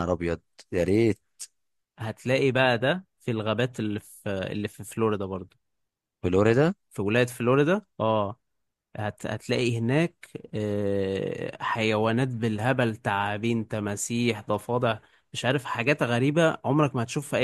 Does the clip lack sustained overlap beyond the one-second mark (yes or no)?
yes